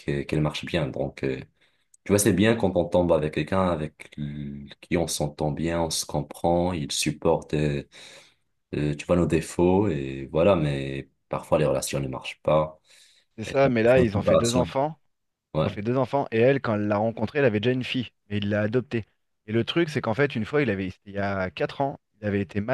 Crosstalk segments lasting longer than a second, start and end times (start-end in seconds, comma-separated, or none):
13.4-14.7